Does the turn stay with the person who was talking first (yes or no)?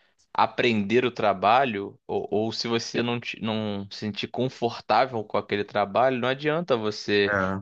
yes